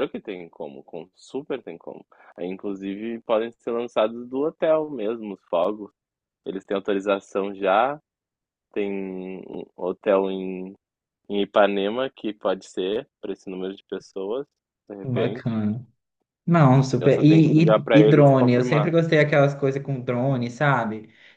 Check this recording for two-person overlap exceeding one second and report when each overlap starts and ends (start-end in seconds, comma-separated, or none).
17.0-18.9